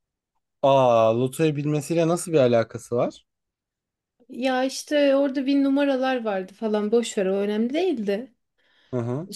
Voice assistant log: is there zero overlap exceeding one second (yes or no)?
yes